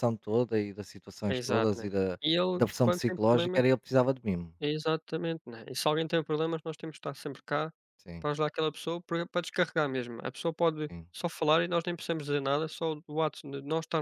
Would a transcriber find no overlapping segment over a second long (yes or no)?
no